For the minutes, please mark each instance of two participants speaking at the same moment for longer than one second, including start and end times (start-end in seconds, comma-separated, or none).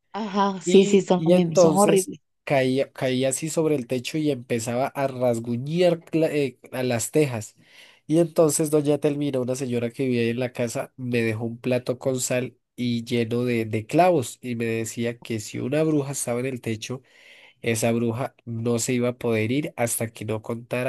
0.6-2.2